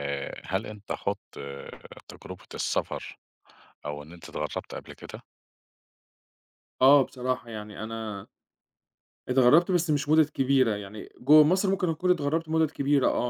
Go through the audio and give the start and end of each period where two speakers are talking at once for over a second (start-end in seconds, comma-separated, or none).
none